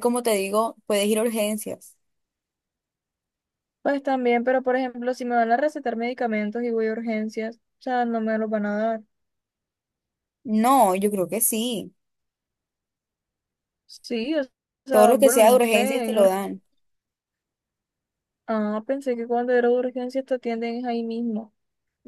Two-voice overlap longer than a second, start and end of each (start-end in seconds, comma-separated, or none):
14.9-16.3